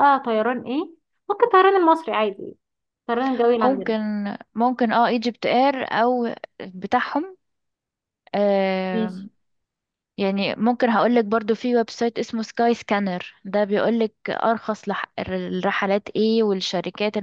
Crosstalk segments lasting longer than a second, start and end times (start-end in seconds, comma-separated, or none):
none